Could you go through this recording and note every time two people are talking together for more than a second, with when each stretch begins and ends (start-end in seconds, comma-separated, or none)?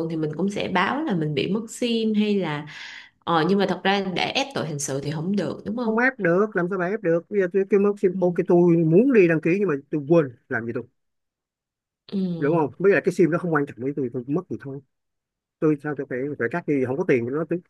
none